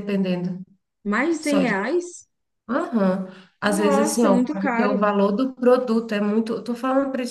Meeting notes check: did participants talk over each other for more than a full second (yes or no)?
yes